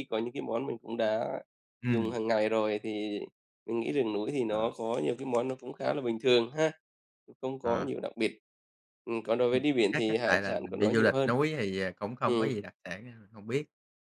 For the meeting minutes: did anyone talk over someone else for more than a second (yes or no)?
yes